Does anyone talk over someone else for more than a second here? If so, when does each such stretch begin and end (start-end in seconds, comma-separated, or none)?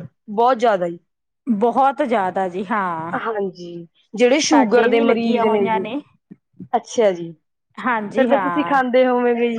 4.5-5.8